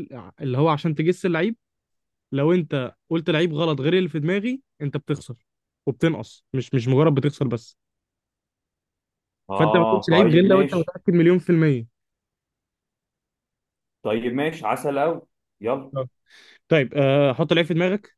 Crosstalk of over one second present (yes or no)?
yes